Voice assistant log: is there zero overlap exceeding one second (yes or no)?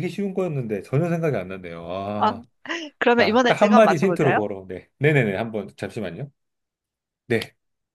no